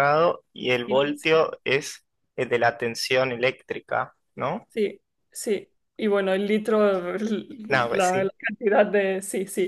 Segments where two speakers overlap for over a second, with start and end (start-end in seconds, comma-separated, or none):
none